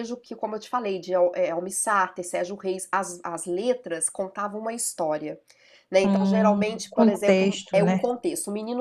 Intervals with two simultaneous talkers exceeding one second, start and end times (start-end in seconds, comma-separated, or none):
6.0-8.0